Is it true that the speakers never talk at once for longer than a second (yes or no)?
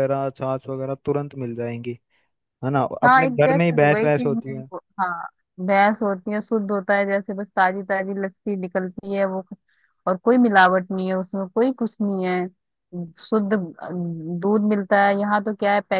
no